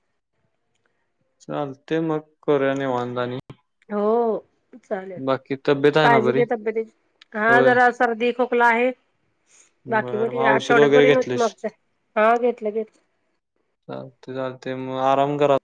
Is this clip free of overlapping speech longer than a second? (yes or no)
no